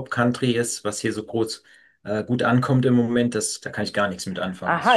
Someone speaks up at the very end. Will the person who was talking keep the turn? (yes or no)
no